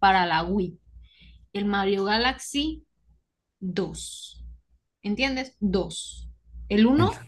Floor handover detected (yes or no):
no